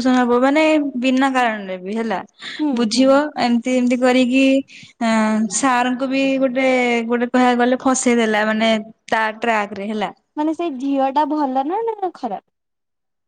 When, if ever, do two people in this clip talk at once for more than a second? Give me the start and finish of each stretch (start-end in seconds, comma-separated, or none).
none